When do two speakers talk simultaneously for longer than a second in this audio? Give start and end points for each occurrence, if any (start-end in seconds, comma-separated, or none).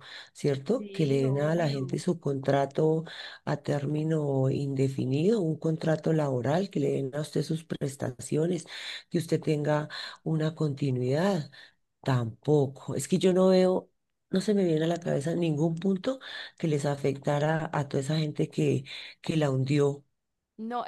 0.8-2.0